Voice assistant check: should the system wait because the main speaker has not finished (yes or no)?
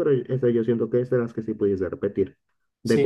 no